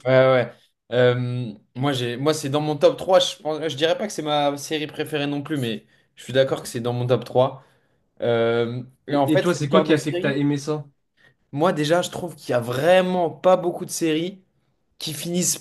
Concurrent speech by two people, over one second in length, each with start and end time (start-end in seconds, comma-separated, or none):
9.1-10.4